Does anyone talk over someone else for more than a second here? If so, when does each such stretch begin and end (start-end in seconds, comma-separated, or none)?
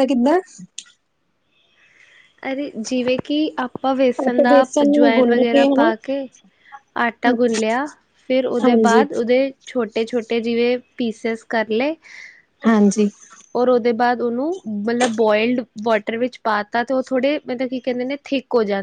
4.3-5.9